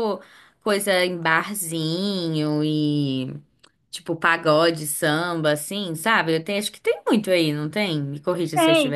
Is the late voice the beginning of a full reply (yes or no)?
yes